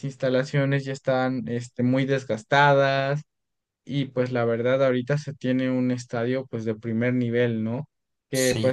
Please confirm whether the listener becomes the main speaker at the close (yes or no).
no